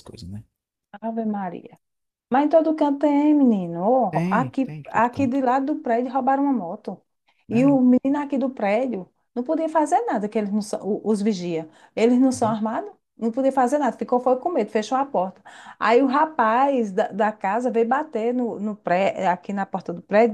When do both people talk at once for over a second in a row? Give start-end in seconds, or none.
4.1-5.4